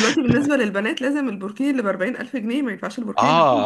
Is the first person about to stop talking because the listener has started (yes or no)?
yes